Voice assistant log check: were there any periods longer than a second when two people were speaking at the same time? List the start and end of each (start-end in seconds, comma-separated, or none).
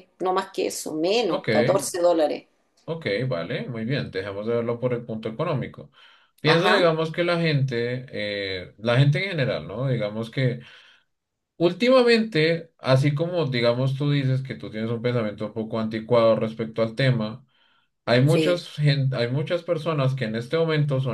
none